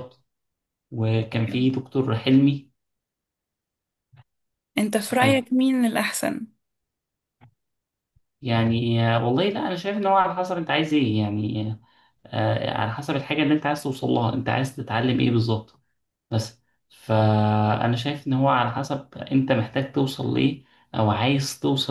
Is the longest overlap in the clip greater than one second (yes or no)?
no